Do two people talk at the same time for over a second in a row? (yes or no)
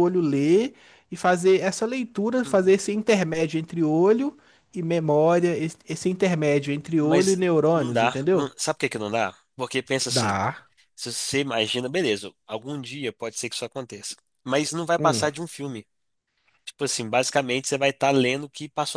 yes